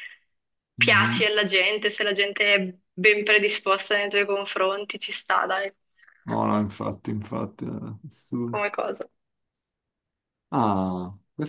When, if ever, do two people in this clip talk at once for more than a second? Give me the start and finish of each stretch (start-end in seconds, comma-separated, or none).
none